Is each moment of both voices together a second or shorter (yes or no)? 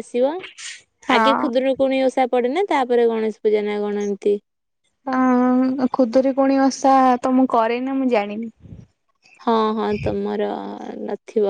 yes